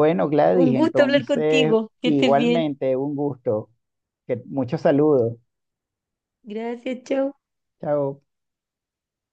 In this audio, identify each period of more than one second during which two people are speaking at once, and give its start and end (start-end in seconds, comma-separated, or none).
0.5-2.6